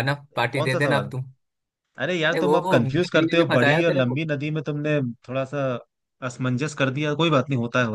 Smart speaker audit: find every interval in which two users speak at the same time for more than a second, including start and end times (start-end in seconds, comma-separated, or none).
2.3-4.2